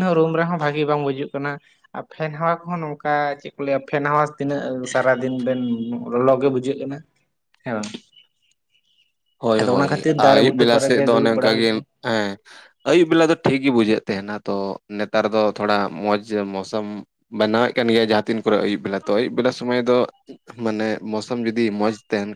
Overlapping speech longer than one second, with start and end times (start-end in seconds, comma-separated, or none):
9.6-11.7